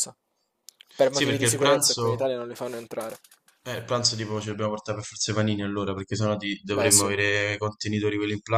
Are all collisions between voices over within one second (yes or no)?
no